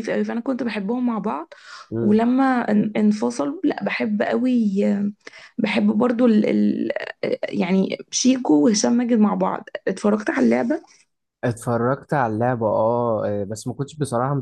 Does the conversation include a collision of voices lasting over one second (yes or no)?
no